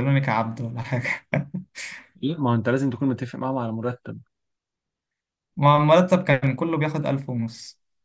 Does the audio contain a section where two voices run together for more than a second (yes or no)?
no